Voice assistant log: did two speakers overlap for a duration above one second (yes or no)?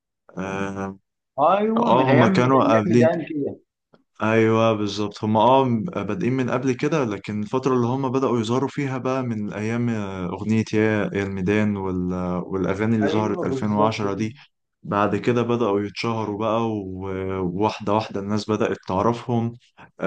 yes